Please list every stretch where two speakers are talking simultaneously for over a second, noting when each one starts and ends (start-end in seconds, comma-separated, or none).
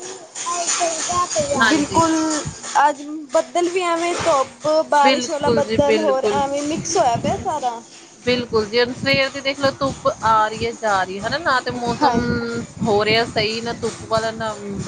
5.0-6.4